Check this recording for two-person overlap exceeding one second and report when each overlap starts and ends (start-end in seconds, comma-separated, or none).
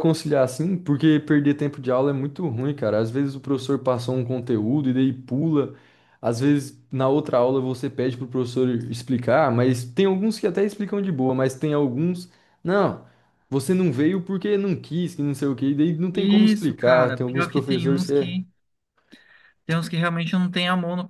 16.1-18.3